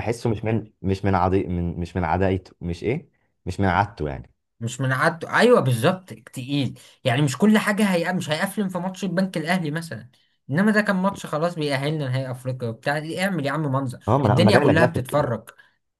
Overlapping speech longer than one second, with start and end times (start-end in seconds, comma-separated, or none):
14.1-15.4